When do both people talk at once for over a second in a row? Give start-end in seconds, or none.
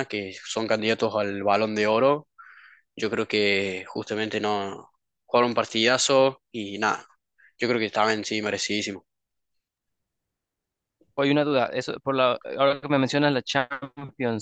none